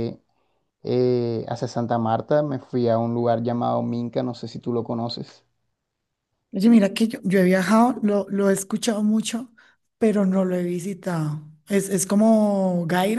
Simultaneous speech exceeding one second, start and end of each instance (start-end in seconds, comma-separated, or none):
none